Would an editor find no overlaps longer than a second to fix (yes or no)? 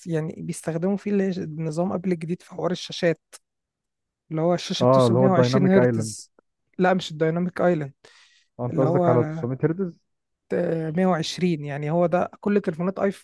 no